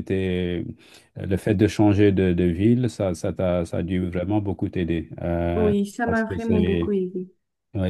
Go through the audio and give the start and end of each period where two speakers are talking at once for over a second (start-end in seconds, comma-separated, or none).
5.5-7.0